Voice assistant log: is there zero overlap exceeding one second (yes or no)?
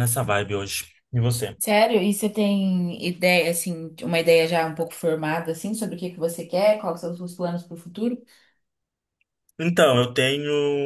yes